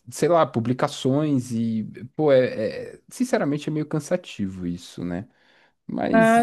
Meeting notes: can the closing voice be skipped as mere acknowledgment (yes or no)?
no